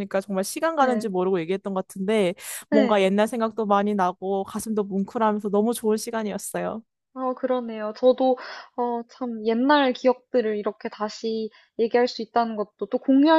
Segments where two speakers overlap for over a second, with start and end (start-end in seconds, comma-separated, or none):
none